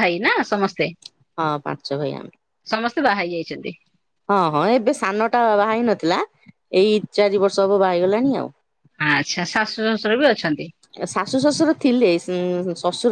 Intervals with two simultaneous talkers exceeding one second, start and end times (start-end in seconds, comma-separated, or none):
none